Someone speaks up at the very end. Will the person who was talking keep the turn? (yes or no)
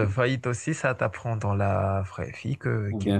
yes